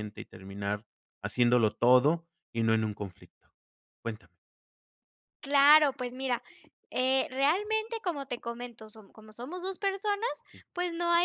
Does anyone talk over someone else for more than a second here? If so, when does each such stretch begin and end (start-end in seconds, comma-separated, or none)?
none